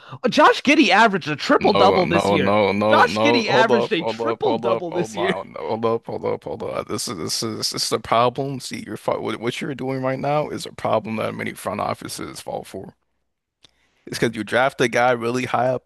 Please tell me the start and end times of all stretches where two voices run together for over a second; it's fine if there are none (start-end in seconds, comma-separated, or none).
1.6-5.3